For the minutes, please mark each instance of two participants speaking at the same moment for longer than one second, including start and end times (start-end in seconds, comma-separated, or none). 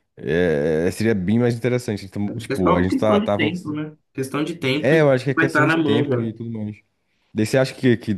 2.4-3.7, 4.8-6.2